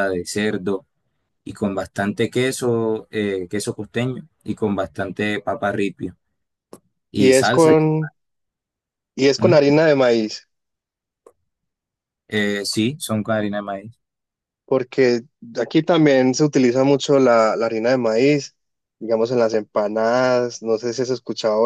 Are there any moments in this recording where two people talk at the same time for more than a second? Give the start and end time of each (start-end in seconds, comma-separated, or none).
none